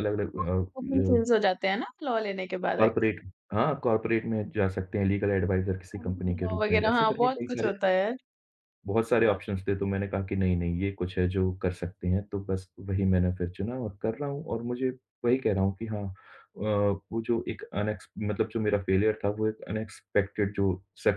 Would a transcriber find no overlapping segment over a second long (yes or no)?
no